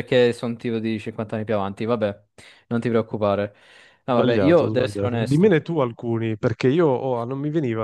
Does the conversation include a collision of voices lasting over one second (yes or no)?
yes